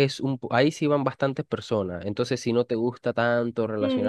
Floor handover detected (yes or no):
yes